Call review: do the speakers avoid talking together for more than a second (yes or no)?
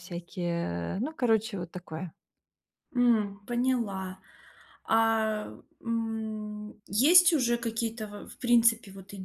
yes